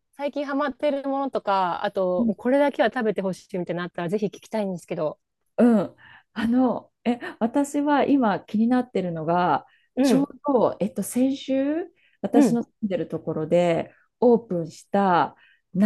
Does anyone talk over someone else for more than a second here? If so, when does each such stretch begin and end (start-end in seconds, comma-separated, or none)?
none